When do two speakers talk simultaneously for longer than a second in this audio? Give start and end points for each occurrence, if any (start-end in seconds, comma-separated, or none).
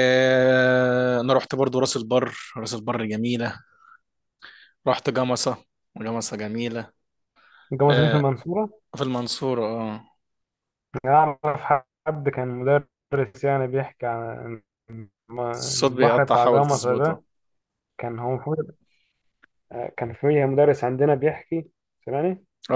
15.8-17.2